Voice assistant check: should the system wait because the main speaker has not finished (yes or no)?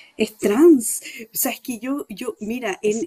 yes